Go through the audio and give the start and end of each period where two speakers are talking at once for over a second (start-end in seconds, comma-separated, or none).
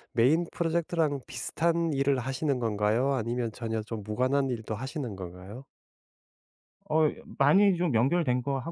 none